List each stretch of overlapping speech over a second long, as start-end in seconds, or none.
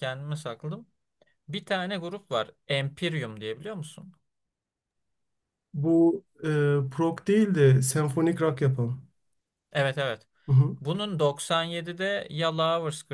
none